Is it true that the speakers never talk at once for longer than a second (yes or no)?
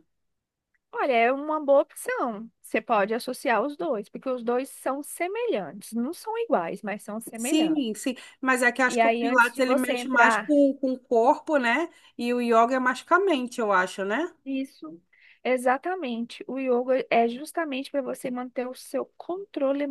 no